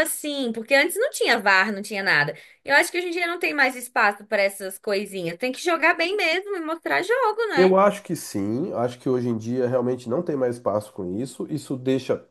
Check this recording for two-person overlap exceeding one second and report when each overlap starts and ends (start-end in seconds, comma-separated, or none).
none